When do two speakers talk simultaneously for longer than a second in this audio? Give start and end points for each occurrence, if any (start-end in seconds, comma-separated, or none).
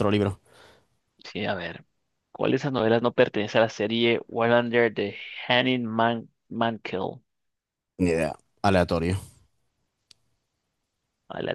none